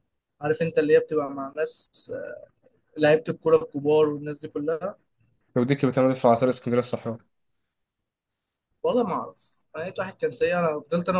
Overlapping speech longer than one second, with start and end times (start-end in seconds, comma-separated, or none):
none